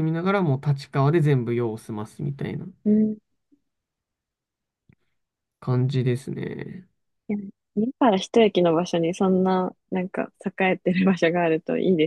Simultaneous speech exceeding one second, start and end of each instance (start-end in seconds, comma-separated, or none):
none